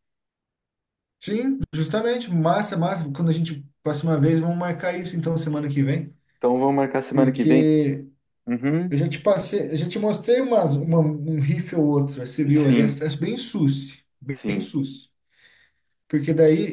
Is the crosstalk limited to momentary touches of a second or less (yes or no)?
yes